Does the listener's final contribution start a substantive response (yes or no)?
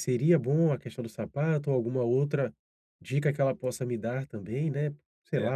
yes